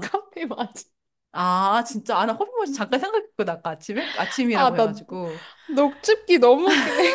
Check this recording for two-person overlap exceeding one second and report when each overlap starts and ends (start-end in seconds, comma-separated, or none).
none